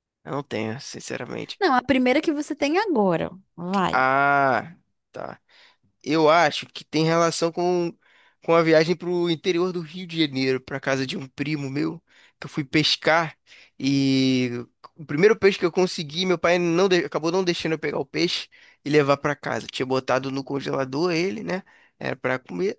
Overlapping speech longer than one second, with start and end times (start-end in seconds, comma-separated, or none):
none